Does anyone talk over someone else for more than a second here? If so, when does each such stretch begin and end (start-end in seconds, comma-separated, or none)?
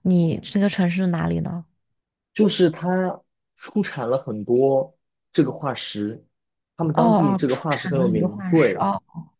6.9-8.9